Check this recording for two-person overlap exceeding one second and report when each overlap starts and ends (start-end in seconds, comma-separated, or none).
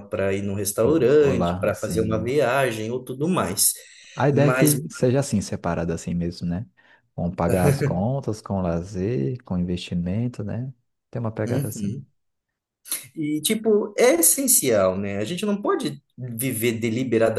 0.8-2.3